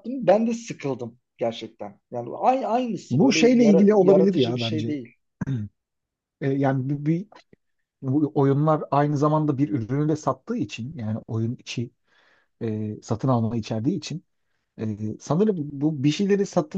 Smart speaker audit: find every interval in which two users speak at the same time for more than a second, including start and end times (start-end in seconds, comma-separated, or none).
3.1-5.0